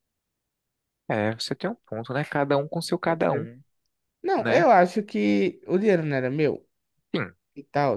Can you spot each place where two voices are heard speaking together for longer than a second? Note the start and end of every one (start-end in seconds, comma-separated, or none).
none